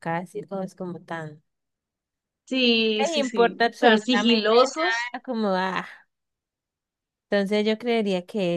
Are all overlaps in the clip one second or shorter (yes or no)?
no